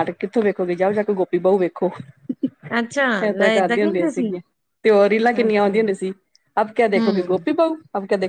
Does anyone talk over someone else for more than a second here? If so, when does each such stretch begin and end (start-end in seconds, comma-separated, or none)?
2.8-4.3